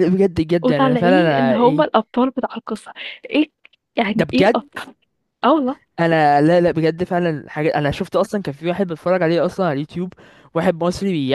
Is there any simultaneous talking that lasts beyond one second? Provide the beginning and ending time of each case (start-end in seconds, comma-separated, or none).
0.6-1.9